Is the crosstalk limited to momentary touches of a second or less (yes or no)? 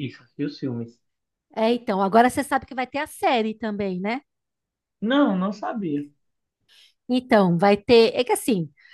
yes